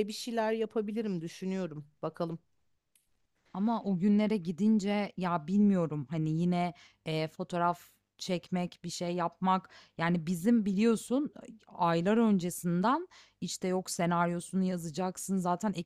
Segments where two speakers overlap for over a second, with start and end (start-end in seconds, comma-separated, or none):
none